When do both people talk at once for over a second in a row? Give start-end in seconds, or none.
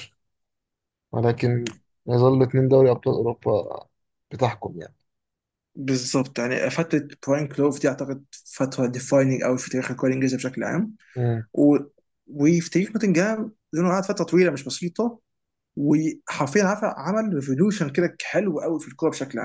none